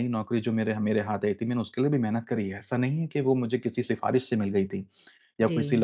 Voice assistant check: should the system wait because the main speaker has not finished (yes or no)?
yes